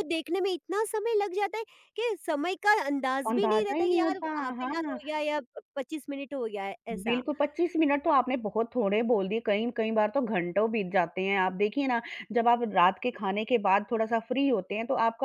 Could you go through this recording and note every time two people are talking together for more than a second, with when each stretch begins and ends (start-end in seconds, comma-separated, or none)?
3.3-5.0